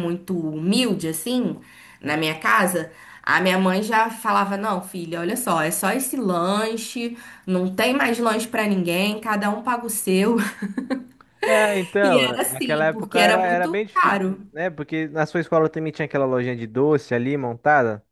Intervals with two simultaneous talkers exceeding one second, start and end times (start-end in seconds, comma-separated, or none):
12.0-14.4